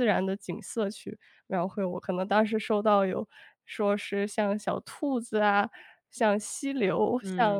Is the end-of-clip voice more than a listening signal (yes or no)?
yes